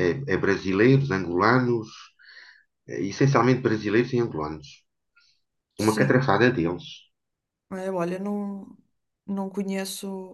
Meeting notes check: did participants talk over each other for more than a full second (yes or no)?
no